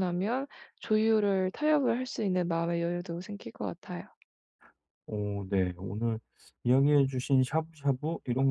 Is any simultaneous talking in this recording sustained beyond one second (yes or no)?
no